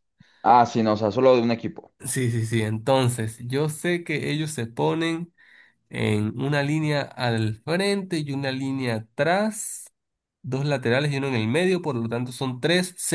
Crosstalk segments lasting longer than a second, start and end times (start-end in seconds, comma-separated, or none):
none